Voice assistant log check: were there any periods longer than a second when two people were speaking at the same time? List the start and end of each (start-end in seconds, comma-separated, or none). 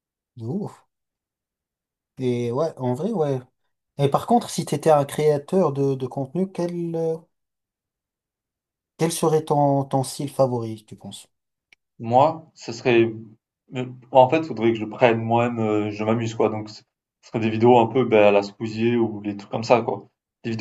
none